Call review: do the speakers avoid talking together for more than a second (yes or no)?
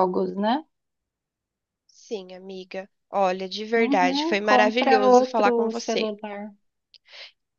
no